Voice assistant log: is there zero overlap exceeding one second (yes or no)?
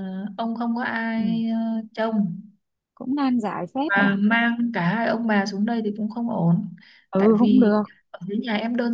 yes